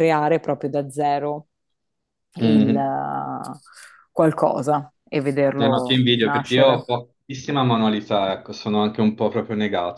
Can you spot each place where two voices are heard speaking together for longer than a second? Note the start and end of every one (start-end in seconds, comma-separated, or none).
5.5-6.9